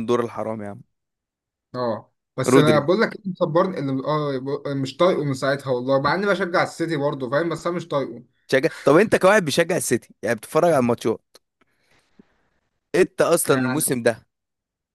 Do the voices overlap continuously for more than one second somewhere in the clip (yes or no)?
no